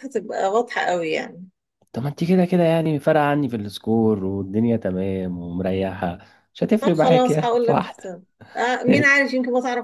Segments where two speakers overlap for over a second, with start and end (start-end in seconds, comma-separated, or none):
6.8-8.2